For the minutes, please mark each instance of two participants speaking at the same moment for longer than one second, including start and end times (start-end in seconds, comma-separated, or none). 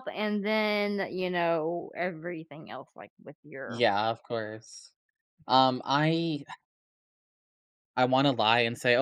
none